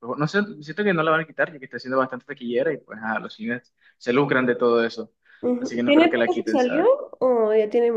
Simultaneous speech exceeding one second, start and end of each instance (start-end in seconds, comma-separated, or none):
5.6-6.9